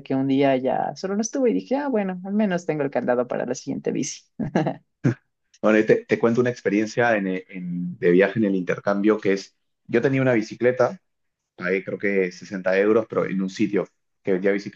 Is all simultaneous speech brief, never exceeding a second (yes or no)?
yes